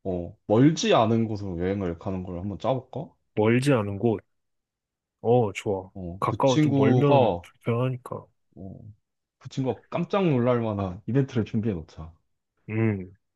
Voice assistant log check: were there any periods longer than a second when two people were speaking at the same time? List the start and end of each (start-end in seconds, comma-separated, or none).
5.9-7.5